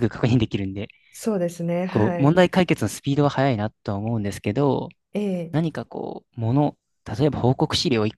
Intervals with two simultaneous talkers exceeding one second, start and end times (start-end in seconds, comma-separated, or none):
none